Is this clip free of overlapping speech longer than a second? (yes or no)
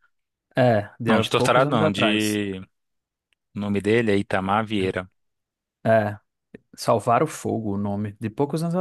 no